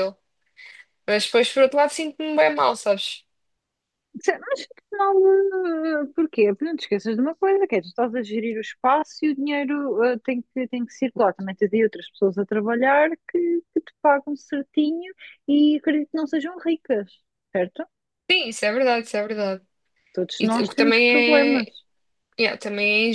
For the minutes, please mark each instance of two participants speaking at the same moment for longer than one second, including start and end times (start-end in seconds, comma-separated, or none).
20.4-21.7